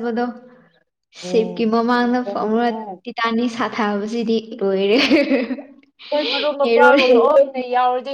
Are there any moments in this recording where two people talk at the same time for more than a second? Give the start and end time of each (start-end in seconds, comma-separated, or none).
1.2-2.7